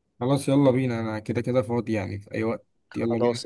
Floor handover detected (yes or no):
yes